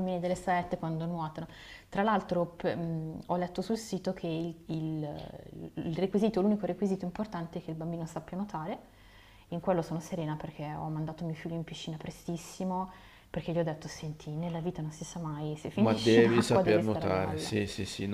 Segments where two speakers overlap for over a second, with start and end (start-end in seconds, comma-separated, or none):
15.7-17.5